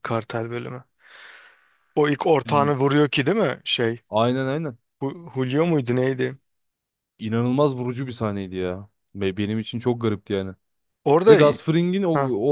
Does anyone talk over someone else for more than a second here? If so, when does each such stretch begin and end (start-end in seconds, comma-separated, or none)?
none